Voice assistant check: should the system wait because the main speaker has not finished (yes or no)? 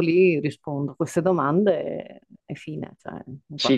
no